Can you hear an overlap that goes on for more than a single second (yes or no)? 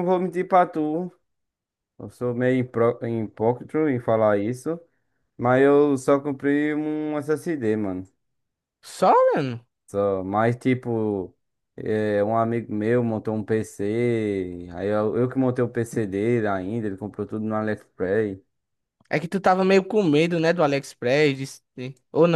no